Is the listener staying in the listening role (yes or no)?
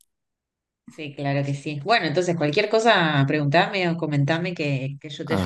no